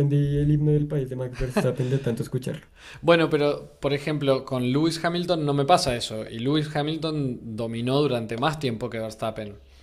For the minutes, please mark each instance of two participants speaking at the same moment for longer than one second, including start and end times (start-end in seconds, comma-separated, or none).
none